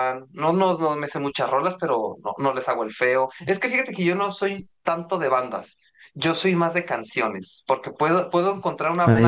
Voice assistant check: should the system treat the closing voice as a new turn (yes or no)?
no